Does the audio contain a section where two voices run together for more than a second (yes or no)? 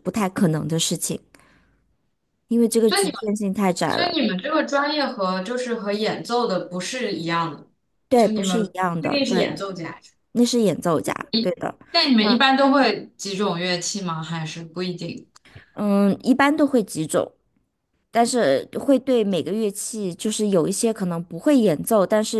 yes